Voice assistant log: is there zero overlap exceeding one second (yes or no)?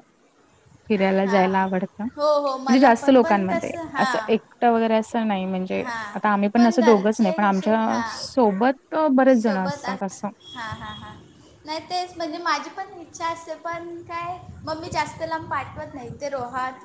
no